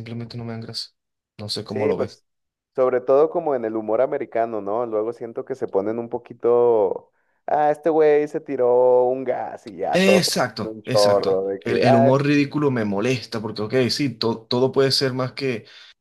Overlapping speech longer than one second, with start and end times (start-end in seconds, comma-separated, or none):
9.9-12.1